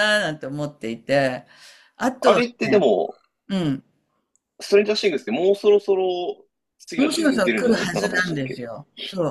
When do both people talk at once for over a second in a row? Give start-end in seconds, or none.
6.9-8.7